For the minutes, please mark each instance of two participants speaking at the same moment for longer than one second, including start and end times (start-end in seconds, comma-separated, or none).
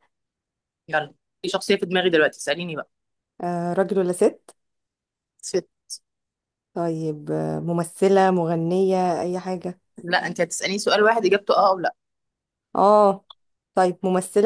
none